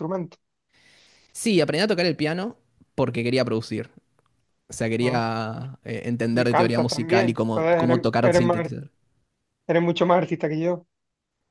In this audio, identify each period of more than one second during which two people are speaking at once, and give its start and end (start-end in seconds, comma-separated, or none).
6.3-8.7